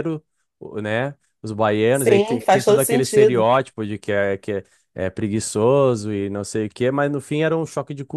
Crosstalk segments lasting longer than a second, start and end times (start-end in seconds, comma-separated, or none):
1.9-3.4